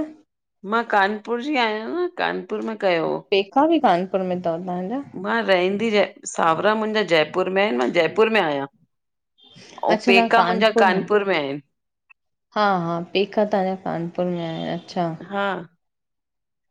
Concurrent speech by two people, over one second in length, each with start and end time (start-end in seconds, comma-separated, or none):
none